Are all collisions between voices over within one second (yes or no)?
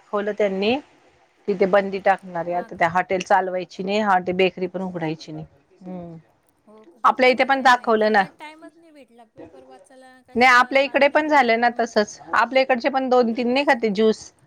yes